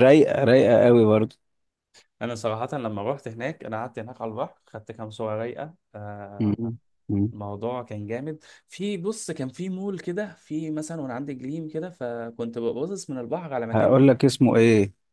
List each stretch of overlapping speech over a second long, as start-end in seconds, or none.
none